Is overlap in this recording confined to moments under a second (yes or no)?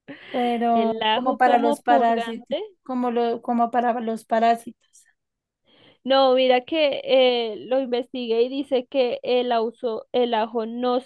no